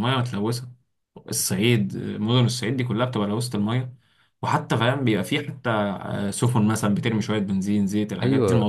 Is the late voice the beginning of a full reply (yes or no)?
yes